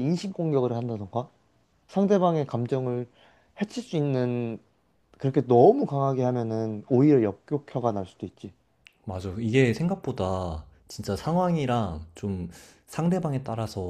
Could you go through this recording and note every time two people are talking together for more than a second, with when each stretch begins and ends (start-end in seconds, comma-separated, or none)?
none